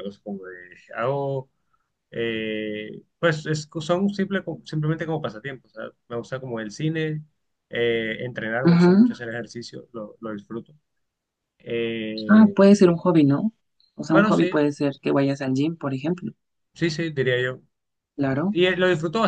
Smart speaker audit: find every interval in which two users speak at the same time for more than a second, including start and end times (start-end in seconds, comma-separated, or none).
none